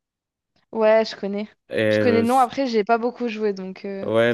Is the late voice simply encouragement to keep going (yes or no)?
no